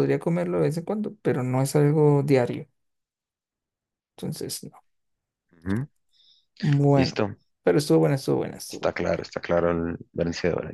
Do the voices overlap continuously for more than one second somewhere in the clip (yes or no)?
no